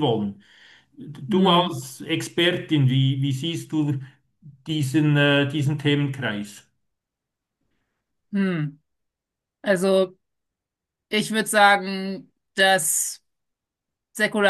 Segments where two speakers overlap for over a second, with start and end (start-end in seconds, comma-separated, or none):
none